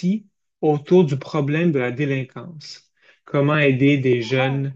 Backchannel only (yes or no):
yes